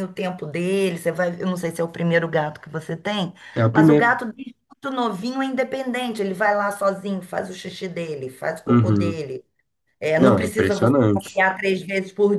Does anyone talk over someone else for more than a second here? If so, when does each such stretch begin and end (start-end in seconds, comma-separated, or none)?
10.2-11.4